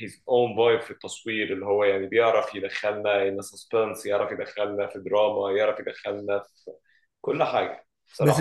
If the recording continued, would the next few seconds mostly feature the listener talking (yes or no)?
yes